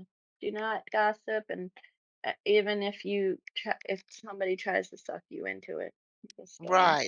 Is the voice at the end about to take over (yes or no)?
yes